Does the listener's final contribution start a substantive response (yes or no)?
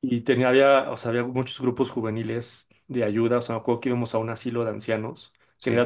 no